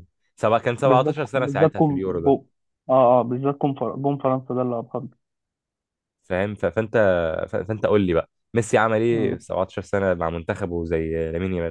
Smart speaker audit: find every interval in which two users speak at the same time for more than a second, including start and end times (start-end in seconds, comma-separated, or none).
0.8-2.4